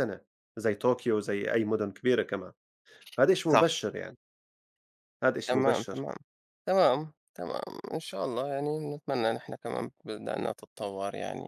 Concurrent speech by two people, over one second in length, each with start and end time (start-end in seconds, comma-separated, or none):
none